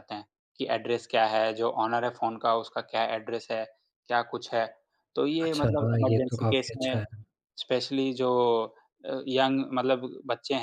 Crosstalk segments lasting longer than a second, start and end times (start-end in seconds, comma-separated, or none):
5.5-7.0